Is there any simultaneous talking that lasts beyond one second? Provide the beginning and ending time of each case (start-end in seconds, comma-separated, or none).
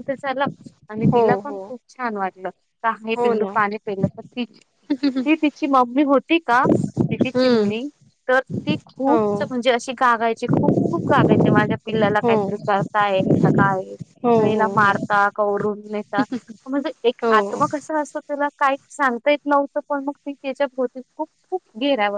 none